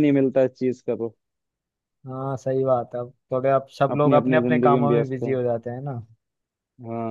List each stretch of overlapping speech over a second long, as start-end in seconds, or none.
4.0-5.3